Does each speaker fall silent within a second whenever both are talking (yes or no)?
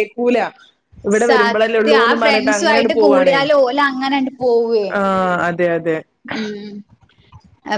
no